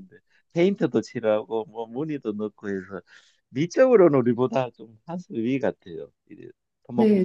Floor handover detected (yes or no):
yes